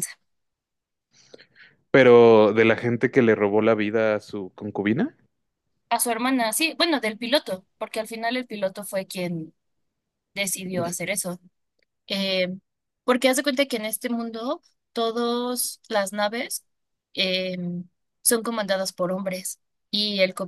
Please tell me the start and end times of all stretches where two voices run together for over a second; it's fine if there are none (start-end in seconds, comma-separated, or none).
none